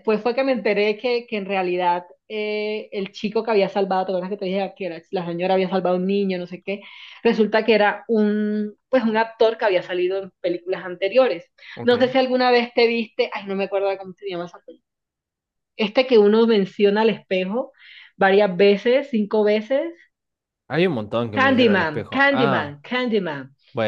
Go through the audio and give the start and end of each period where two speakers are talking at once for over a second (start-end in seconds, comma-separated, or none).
21.4-22.8